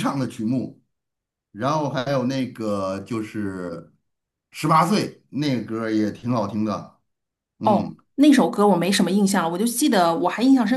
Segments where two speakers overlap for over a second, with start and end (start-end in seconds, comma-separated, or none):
none